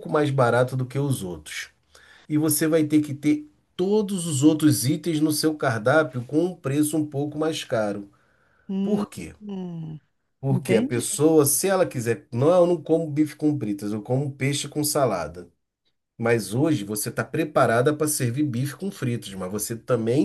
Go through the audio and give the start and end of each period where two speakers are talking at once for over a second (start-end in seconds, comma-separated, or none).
none